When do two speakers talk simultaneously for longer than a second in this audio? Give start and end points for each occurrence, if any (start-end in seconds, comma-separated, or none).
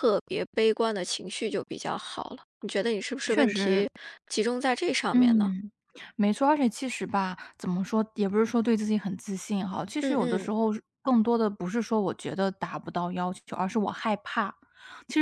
none